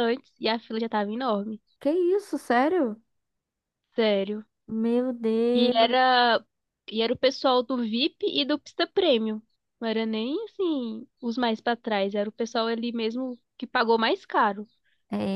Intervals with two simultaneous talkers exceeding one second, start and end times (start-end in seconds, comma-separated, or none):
none